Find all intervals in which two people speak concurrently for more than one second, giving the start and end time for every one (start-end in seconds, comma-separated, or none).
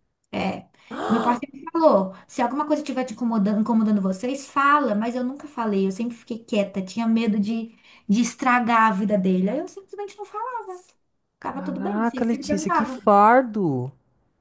11.4-13.0